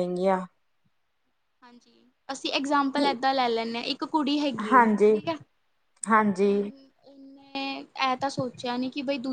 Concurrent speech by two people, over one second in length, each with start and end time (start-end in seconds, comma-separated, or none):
none